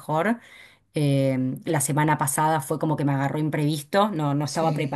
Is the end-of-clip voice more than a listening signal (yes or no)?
no